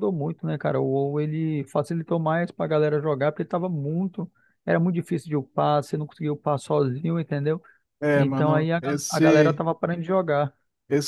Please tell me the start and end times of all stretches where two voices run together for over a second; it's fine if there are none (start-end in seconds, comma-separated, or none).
8.1-9.6